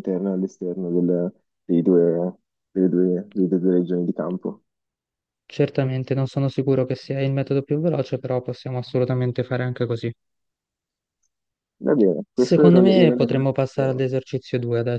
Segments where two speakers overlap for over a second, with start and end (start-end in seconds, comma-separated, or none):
12.4-14.0